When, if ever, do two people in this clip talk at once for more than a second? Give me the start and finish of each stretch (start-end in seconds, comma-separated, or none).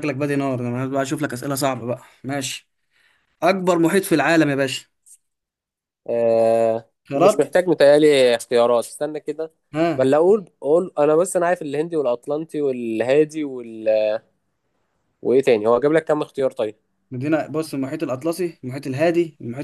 none